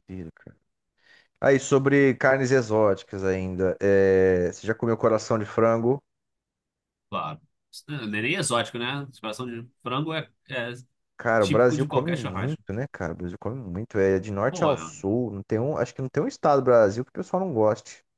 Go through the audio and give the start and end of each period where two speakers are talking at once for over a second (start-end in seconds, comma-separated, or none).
11.4-12.6